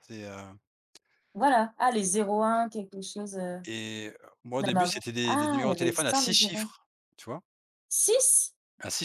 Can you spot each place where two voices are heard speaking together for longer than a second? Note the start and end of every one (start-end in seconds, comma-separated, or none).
4.6-6.7